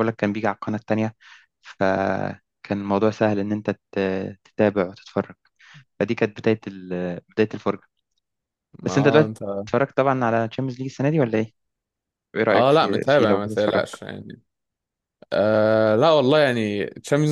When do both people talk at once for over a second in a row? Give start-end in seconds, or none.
12.5-13.8